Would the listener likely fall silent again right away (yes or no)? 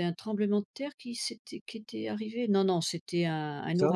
yes